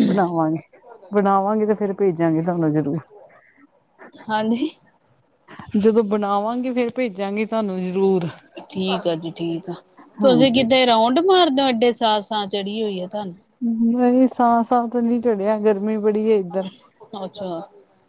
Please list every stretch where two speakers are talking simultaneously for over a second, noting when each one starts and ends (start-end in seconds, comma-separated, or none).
none